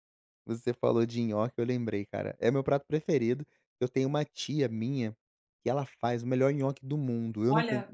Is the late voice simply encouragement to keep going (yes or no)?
yes